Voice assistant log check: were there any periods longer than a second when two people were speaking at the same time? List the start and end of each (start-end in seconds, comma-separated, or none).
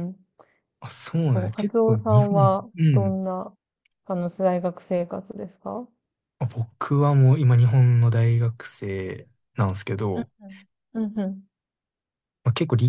1.3-3.2